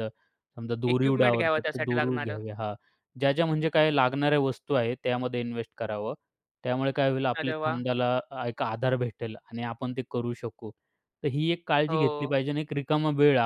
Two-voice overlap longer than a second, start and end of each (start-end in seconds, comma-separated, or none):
0.9-2.4